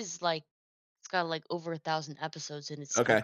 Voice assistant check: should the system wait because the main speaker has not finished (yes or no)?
no